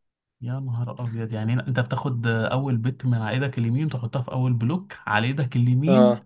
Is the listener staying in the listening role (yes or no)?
no